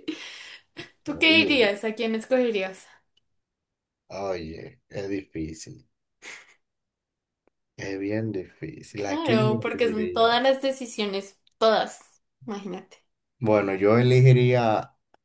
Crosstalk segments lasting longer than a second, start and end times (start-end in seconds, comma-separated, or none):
9.1-10.4